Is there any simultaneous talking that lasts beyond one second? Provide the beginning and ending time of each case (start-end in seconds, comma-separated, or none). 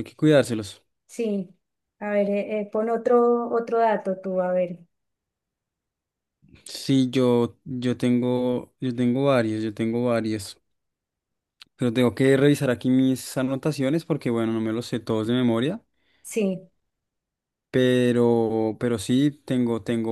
none